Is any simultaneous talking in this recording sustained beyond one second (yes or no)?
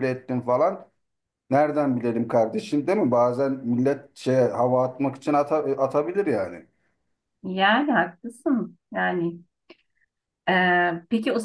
no